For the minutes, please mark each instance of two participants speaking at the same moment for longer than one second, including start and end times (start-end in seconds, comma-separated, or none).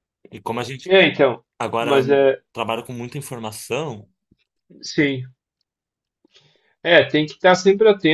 none